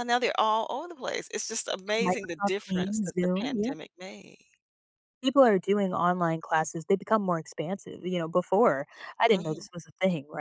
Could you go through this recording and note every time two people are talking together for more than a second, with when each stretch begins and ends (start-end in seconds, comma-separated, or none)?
2.0-3.7